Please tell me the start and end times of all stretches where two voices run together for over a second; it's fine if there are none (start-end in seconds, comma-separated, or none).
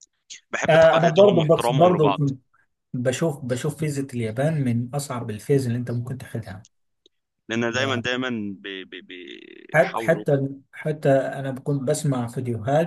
0.7-2.1